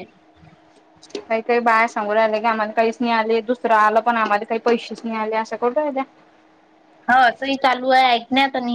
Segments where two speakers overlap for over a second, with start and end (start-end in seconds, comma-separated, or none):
none